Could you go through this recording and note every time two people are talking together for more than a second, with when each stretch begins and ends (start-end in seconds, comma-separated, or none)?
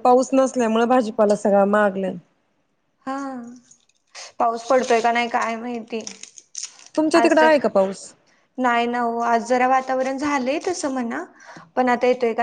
none